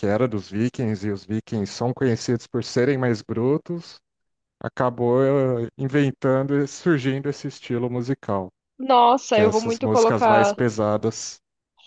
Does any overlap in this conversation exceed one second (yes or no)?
yes